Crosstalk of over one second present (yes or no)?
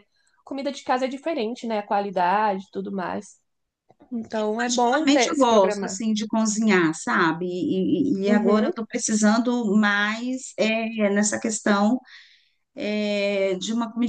yes